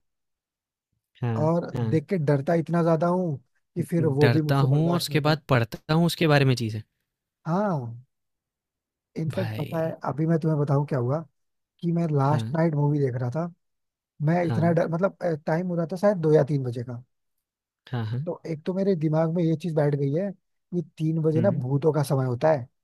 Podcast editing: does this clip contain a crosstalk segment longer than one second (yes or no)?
yes